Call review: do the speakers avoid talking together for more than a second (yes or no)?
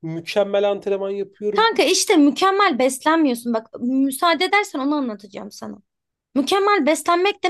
yes